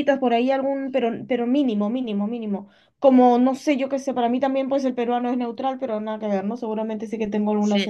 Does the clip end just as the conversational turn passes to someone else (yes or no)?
yes